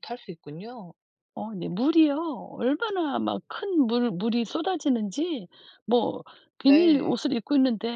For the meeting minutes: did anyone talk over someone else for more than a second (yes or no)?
no